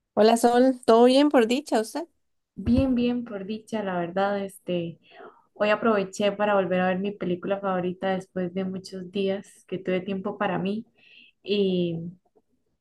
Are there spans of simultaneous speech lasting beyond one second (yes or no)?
no